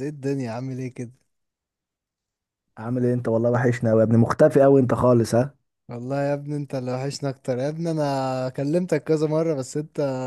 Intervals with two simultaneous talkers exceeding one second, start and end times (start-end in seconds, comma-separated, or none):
none